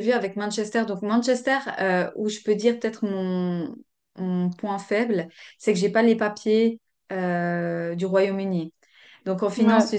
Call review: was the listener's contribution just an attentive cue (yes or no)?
yes